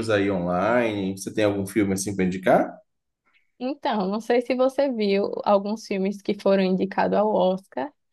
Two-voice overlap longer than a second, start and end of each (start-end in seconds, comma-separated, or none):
none